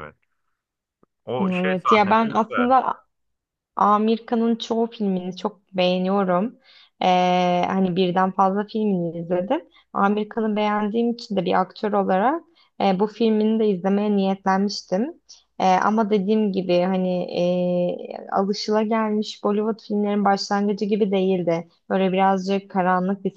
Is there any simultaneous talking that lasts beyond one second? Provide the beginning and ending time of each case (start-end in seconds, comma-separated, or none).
1.4-2.7